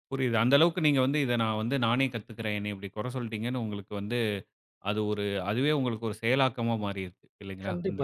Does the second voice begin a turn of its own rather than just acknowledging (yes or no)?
yes